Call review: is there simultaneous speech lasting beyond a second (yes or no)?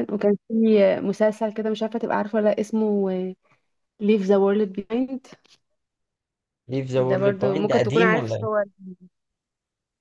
yes